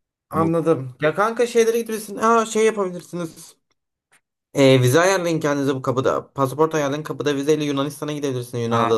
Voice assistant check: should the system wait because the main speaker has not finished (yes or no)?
no